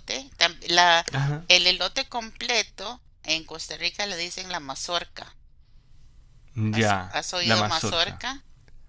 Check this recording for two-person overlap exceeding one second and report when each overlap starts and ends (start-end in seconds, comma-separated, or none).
6.7-8.2